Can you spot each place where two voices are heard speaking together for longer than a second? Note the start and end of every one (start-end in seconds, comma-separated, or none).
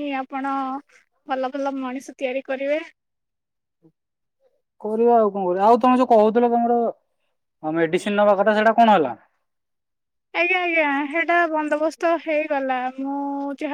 none